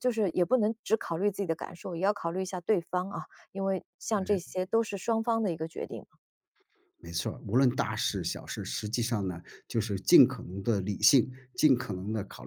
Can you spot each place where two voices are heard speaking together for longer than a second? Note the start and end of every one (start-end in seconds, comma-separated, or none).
none